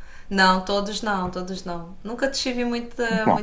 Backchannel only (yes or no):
yes